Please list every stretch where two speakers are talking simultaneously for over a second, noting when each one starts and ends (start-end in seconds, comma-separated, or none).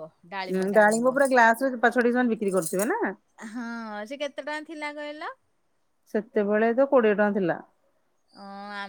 none